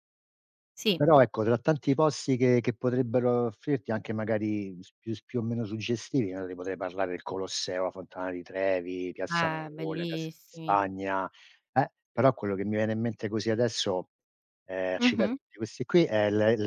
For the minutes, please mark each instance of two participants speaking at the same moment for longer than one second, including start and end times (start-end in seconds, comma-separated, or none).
9.4-10.8